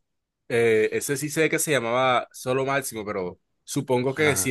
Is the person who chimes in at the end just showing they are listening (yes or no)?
yes